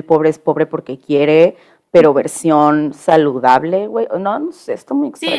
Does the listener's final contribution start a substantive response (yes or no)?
yes